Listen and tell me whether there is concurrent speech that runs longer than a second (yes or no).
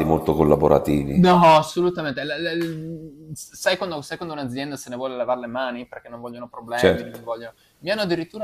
no